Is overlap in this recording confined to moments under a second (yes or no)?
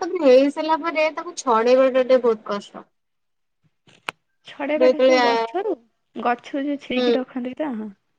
yes